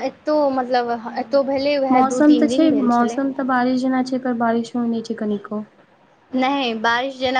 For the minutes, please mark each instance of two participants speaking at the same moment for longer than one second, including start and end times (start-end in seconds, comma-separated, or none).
1.1-3.2